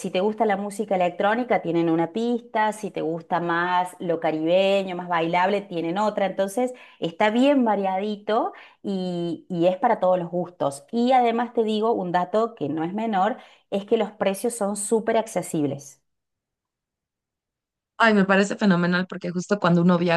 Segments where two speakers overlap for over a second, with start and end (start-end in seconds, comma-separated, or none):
none